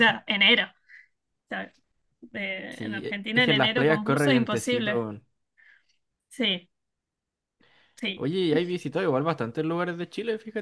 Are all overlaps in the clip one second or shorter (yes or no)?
no